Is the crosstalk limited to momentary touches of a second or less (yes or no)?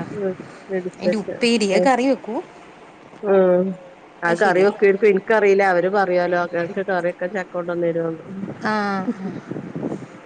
yes